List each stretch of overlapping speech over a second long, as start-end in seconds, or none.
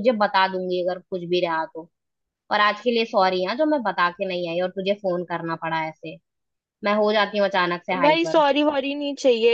none